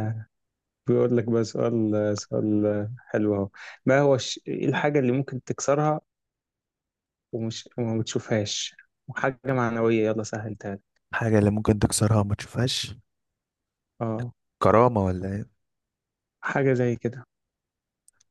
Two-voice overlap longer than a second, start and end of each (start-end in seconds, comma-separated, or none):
none